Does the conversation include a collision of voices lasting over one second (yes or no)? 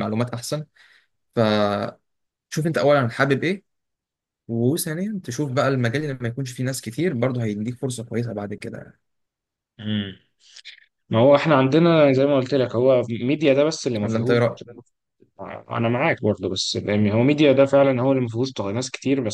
no